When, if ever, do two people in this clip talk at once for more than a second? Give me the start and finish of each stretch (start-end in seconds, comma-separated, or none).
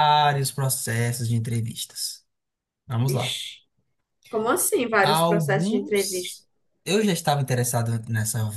5.0-6.4